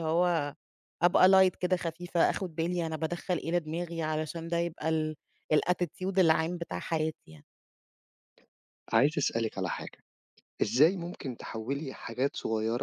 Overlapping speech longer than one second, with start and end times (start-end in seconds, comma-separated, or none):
none